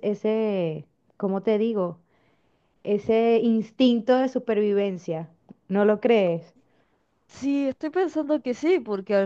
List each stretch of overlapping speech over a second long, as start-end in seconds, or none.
none